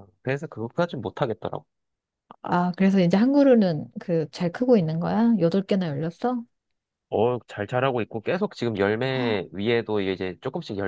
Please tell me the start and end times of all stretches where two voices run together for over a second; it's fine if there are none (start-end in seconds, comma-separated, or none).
none